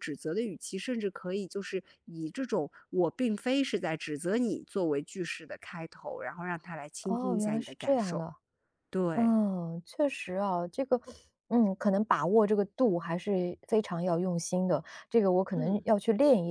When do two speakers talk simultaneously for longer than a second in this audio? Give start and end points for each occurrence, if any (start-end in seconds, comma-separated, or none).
7.0-8.2